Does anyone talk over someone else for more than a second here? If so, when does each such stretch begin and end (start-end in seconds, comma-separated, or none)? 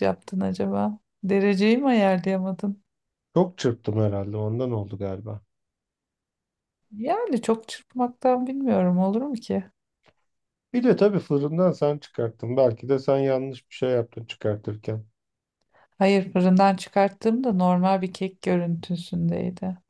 none